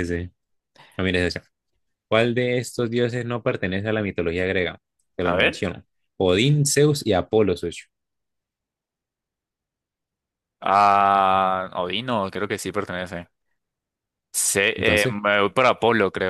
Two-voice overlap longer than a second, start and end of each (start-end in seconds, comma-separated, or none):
none